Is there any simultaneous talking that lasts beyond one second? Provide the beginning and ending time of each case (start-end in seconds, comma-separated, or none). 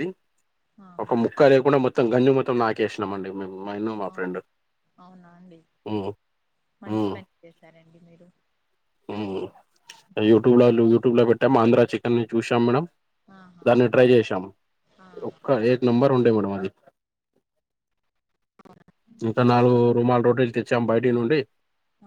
none